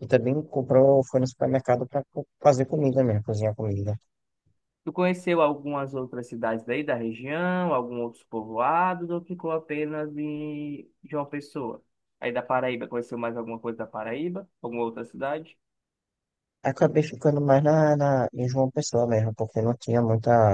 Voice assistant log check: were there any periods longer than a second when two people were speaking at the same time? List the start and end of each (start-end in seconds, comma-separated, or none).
none